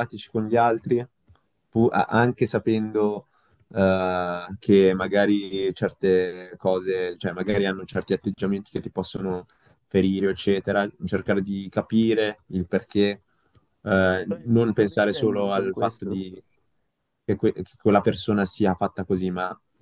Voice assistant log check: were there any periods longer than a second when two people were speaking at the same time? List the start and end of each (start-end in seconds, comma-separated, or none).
14.3-16.2